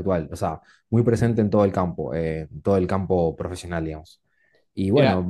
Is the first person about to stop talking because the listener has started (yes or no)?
no